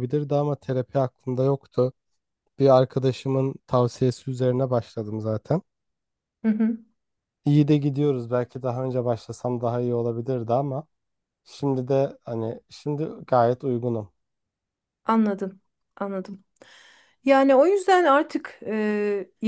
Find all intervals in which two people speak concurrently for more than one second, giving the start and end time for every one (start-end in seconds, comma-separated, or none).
none